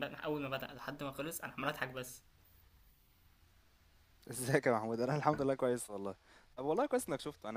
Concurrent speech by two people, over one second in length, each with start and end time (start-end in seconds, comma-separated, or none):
none